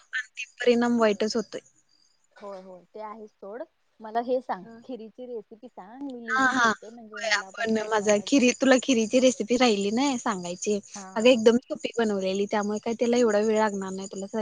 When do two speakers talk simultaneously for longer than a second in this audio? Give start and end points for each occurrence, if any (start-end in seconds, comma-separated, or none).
6.4-8.1